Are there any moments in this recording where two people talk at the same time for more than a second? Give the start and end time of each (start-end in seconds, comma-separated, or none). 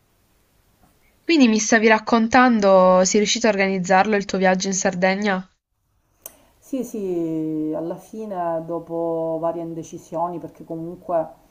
none